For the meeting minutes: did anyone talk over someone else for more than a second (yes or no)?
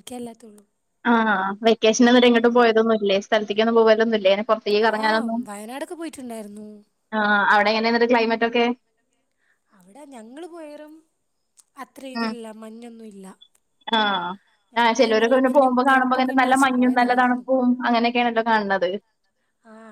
yes